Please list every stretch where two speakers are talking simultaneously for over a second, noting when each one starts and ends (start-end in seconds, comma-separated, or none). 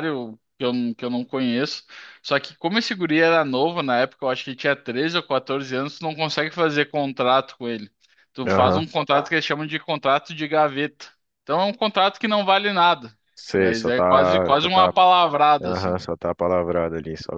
13.6-14.9